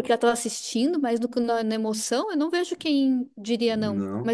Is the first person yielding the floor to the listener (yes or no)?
yes